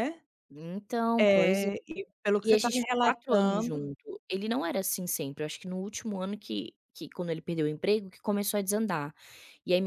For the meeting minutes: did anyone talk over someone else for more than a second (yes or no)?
yes